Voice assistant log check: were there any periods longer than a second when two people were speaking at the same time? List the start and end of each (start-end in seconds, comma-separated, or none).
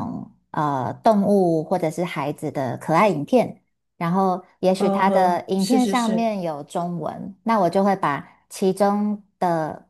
4.8-6.3